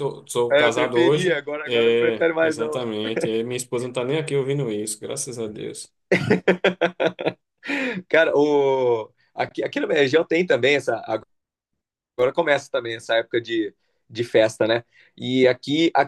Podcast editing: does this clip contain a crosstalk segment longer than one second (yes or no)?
yes